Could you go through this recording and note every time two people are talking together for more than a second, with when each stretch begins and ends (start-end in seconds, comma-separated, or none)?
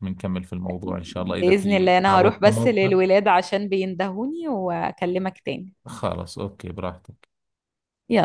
1.0-3.0